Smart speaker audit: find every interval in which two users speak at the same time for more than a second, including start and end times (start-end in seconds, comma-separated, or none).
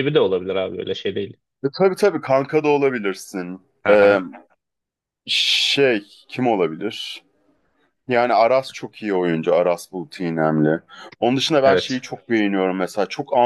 none